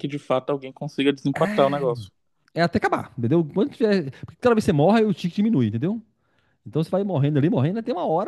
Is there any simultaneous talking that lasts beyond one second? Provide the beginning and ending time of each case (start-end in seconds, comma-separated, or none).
none